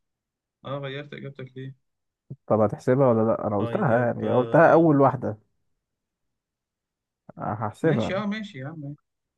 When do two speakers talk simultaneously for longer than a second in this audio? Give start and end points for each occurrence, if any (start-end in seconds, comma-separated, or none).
3.6-4.9